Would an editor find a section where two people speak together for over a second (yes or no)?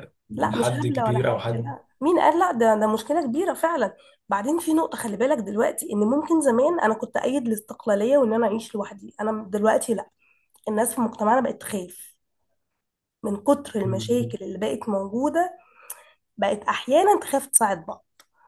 yes